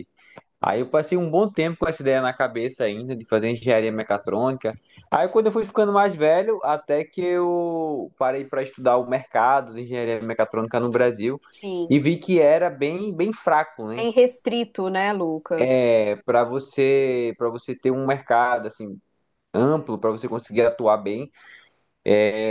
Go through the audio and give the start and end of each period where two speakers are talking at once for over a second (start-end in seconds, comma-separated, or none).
none